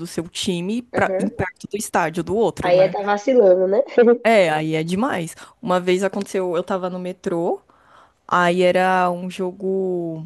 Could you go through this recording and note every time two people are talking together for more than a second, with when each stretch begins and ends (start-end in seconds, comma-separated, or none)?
none